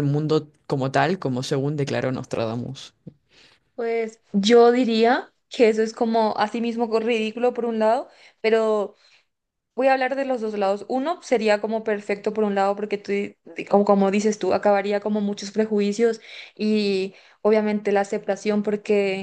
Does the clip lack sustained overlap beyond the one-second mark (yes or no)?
yes